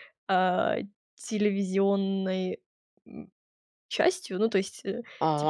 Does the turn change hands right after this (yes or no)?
yes